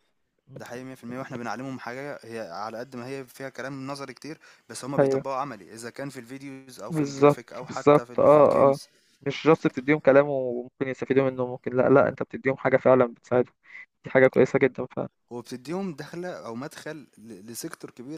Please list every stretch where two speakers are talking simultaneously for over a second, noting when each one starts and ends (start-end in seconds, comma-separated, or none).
6.9-8.8